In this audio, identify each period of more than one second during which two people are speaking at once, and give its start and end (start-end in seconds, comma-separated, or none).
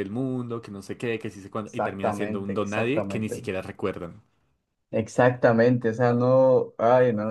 1.6-3.5